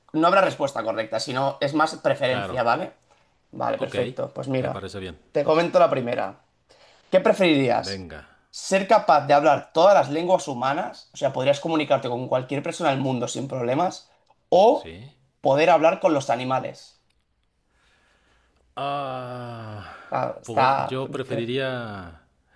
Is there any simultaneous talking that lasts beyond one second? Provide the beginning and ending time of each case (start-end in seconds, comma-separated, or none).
none